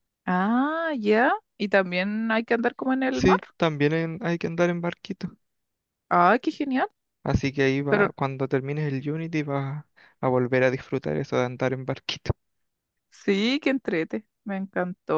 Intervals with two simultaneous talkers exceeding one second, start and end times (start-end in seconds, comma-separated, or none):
none